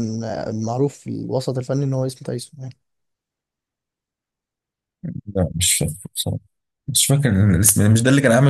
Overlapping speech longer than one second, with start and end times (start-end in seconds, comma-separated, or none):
none